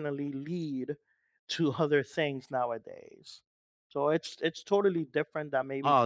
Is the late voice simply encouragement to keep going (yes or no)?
no